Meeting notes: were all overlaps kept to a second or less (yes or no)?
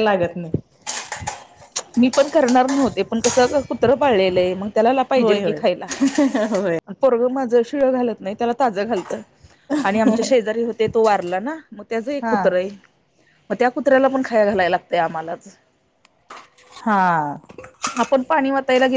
yes